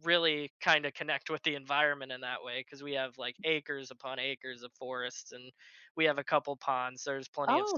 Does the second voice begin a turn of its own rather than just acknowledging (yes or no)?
no